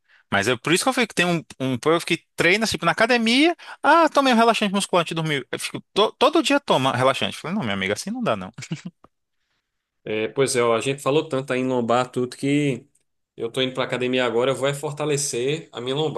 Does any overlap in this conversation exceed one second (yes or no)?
no